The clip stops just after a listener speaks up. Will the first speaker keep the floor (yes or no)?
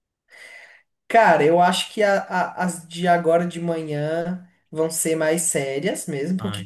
yes